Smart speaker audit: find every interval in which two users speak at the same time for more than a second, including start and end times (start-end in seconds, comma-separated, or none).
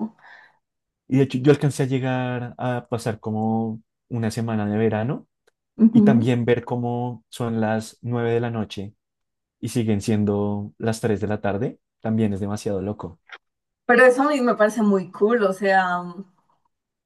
none